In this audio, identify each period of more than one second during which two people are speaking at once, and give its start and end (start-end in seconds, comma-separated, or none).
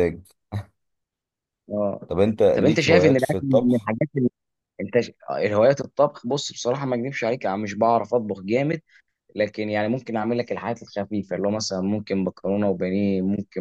2.5-3.9